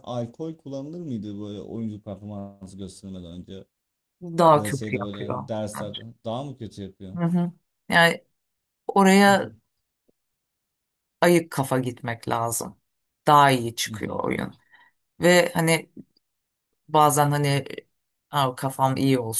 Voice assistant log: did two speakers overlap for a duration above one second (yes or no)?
yes